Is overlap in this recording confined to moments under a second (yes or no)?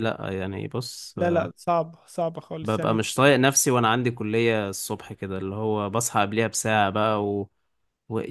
yes